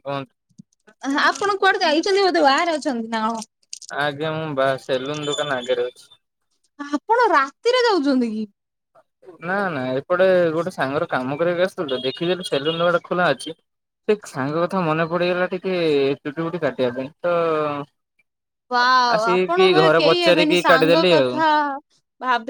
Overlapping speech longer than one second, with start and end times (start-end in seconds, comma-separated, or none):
19.2-21.3